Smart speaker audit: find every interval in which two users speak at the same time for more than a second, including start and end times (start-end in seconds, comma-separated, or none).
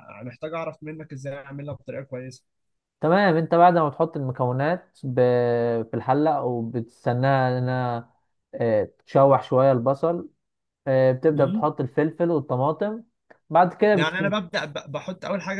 none